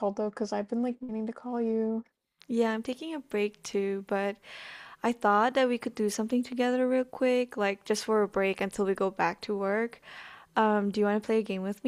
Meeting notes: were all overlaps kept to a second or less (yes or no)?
yes